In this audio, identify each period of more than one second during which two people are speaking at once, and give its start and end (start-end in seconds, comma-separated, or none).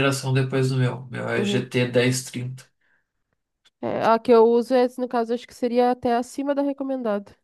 none